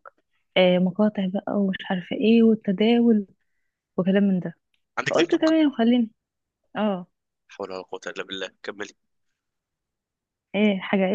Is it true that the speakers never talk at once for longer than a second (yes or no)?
yes